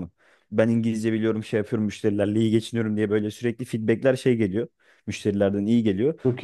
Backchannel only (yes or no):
yes